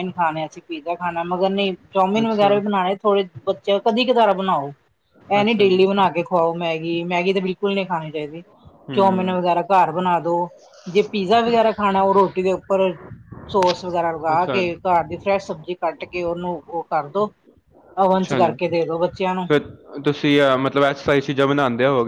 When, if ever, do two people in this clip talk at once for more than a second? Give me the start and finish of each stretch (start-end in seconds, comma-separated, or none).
18.2-19.4